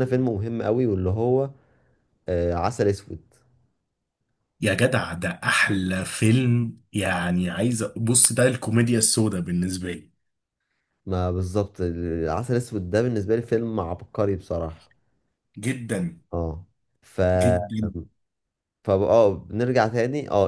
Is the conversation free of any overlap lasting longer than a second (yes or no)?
yes